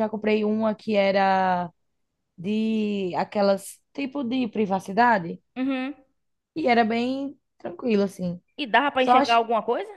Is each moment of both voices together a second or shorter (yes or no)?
yes